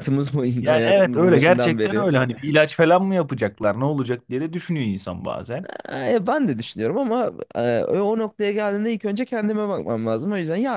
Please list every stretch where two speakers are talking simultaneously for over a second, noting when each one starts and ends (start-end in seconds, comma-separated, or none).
0.6-2.1